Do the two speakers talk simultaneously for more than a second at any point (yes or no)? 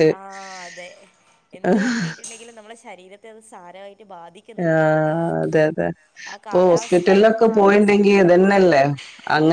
yes